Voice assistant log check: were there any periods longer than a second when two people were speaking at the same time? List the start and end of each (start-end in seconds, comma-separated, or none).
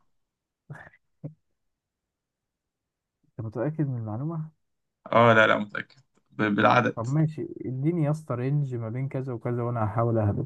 none